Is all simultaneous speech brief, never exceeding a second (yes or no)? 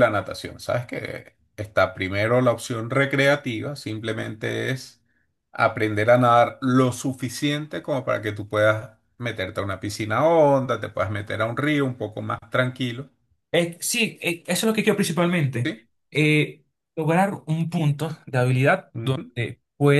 yes